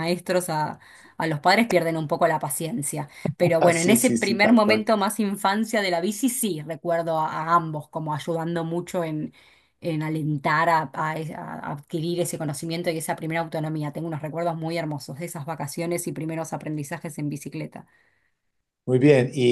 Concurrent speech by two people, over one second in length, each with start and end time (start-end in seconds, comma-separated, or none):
3.6-4.9